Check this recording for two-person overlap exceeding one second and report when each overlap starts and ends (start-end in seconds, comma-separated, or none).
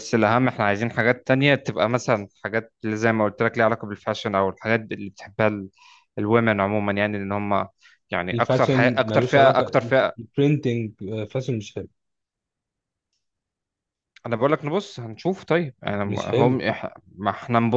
8.3-10.1